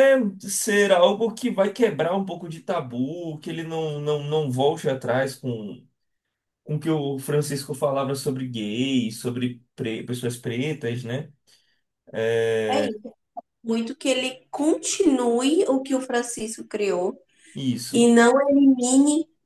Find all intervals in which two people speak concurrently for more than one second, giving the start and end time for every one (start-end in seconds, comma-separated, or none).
none